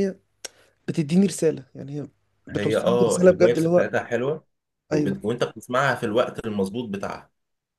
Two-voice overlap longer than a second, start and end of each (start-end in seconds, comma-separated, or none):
2.5-3.9